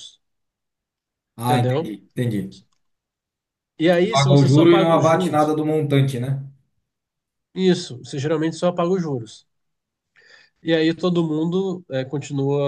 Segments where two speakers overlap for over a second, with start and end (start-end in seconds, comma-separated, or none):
4.1-5.5